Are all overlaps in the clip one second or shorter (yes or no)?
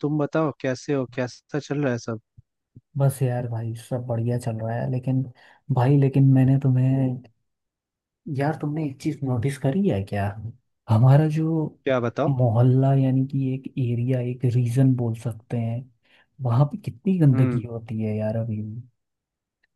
yes